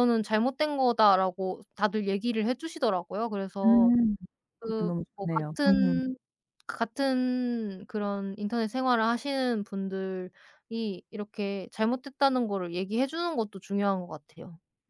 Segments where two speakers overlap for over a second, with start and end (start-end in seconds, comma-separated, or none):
4.6-6.0